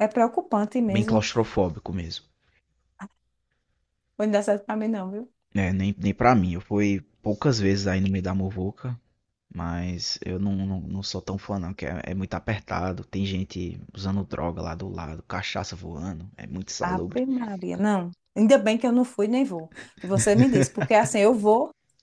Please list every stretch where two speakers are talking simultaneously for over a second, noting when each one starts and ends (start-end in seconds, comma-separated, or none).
none